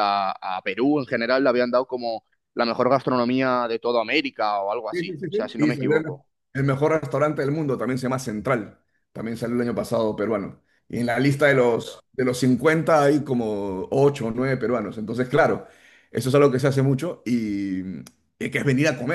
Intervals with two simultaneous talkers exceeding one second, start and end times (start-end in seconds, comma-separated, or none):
4.9-6.3